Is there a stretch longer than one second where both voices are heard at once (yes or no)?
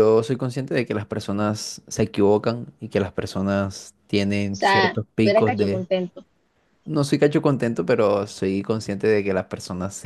yes